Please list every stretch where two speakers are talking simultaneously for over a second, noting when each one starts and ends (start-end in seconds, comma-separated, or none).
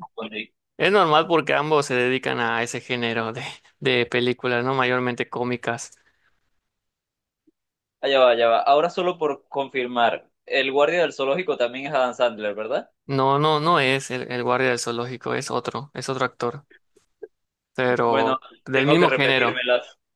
18.1-19.6